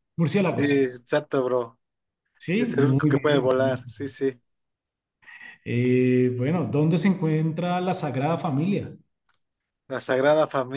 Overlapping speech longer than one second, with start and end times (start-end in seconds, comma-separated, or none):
2.6-4.0